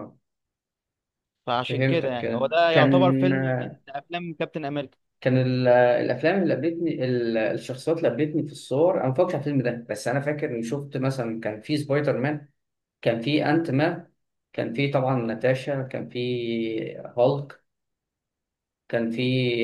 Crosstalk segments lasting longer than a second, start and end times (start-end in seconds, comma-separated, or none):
1.7-3.3